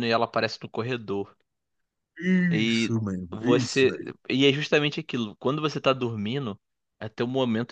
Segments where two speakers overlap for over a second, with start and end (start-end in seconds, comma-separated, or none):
2.5-4.1